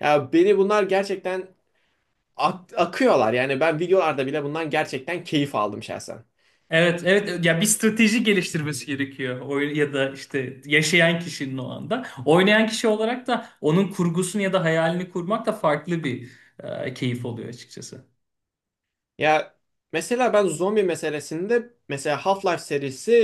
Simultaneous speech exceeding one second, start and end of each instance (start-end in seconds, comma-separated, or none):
none